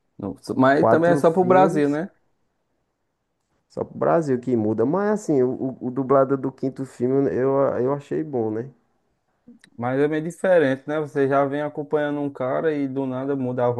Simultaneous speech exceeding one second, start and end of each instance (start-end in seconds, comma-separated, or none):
0.8-2.0